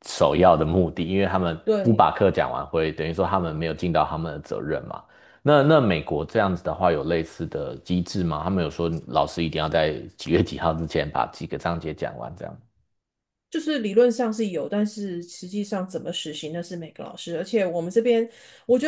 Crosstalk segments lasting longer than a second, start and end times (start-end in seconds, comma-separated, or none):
none